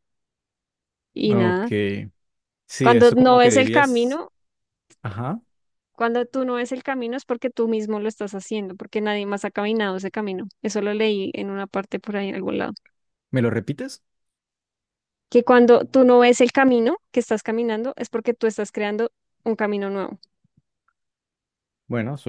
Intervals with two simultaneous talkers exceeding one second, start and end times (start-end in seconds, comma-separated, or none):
2.8-4.2